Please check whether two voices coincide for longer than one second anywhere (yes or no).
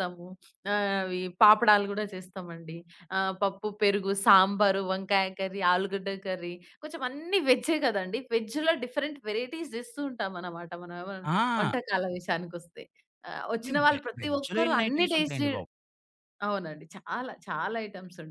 yes